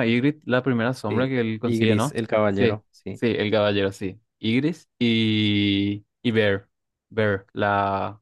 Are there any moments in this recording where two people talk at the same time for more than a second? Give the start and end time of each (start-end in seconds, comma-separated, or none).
1.1-3.2